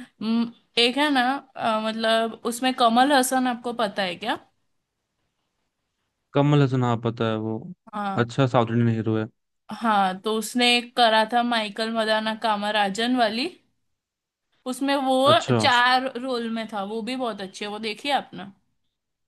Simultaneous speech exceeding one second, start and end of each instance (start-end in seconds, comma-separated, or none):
none